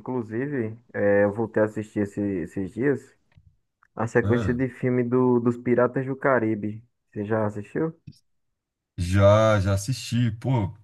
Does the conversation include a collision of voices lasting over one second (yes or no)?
no